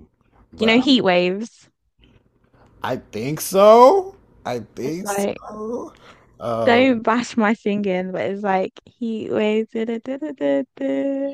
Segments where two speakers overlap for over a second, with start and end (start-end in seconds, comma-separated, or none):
none